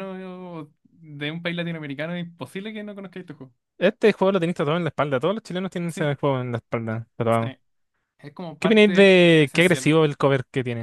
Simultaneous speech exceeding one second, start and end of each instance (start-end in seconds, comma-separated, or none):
8.6-9.9